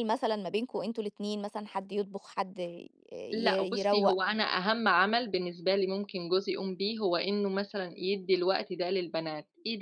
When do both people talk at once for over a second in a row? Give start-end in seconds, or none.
none